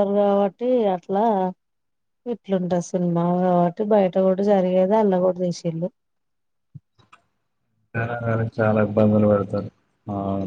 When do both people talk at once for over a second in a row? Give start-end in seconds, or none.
none